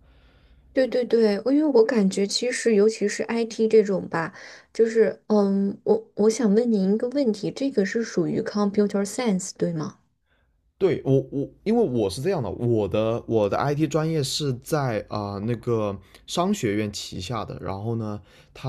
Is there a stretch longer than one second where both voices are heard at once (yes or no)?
no